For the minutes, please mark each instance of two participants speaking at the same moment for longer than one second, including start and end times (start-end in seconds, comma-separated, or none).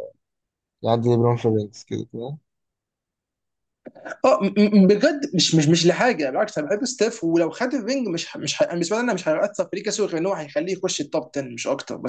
none